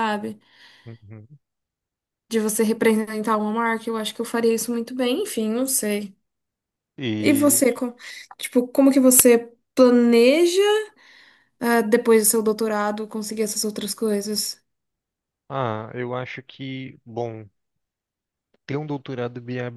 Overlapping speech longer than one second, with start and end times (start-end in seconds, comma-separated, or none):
none